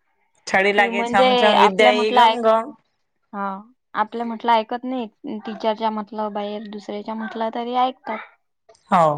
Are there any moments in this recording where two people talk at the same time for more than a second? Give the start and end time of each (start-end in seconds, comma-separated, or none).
0.8-2.4